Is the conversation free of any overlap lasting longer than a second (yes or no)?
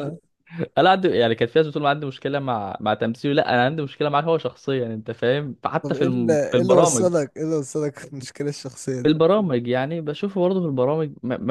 no